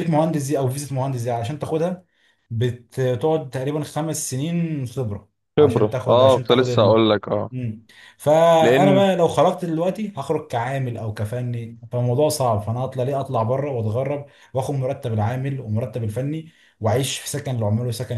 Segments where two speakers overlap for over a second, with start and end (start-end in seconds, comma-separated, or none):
5.6-7.0